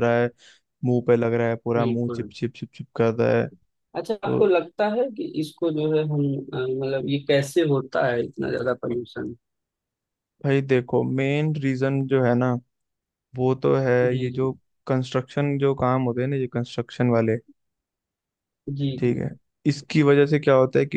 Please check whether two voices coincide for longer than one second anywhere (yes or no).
no